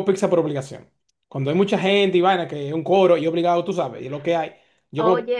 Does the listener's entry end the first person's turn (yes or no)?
no